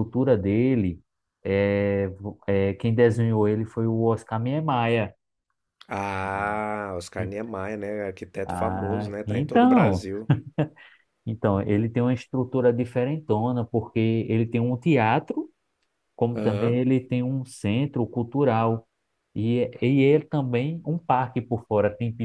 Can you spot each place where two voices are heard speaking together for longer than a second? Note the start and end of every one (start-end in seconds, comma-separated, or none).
8.4-10.1